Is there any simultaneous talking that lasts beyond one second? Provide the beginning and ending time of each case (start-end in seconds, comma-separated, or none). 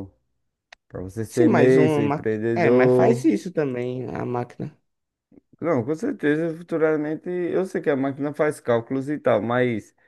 1.3-3.3